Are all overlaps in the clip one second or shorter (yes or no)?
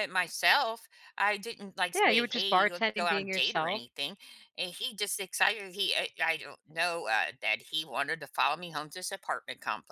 no